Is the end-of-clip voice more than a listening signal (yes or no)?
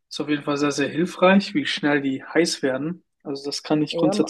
yes